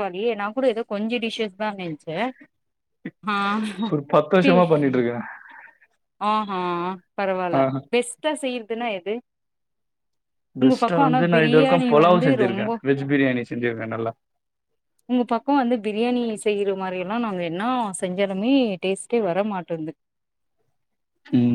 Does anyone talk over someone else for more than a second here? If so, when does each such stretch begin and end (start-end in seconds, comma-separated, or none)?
10.6-12.7